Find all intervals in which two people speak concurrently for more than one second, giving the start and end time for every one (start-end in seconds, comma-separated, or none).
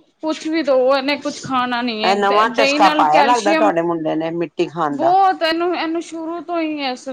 2.1-3.7